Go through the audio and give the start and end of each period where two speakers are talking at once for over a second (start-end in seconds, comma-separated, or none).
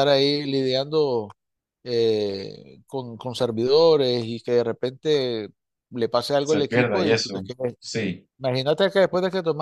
6.4-7.8